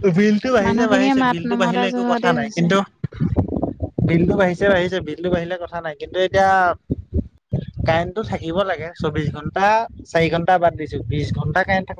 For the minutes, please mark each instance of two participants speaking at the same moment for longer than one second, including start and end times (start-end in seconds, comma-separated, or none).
0.6-2.6